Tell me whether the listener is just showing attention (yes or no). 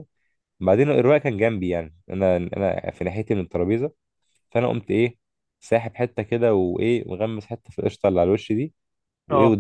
yes